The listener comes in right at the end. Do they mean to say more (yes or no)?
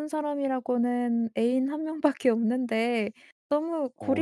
no